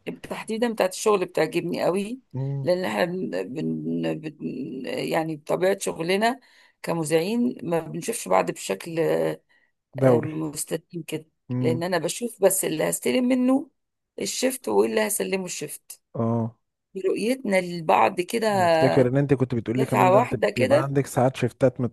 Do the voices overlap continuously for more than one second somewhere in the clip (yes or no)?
yes